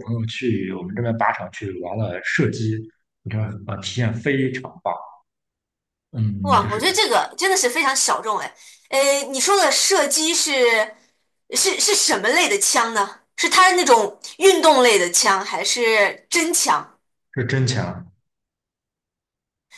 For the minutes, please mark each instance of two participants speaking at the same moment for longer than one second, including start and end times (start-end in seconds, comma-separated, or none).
none